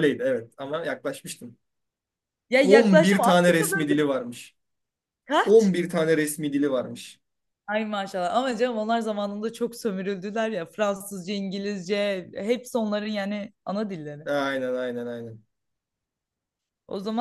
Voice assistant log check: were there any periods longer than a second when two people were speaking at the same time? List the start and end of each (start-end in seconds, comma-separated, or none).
2.6-4.0